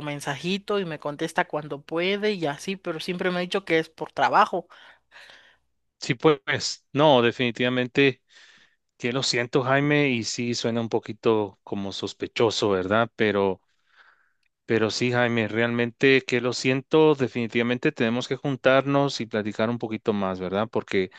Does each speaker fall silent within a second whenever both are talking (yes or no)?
yes